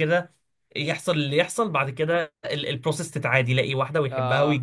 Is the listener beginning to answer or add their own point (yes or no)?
no